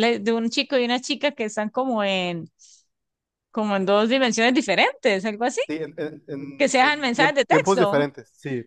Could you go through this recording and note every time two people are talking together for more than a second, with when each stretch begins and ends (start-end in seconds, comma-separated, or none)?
6.6-8.0